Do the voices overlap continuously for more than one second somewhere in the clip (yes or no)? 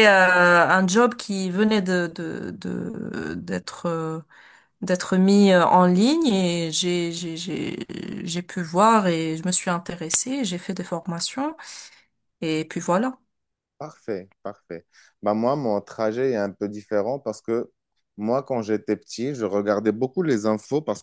no